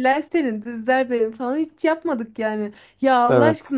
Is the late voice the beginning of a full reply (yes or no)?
no